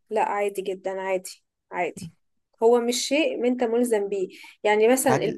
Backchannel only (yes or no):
yes